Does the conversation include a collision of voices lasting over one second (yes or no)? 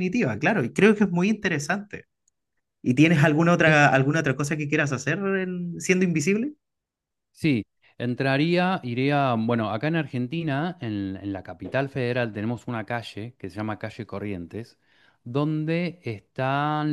no